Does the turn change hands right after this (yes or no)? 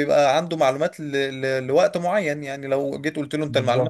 no